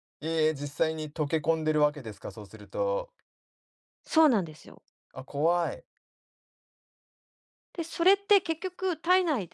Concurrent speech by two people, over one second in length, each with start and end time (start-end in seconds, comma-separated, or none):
none